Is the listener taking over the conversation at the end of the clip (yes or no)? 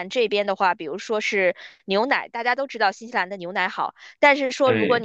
no